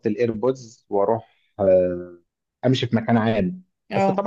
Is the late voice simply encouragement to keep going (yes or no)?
yes